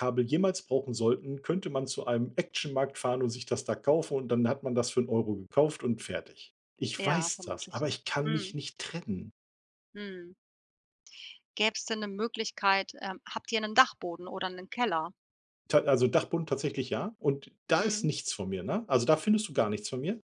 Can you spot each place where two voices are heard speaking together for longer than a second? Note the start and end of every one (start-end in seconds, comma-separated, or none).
7.0-8.5